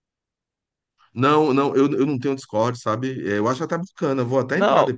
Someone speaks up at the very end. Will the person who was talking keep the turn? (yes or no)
no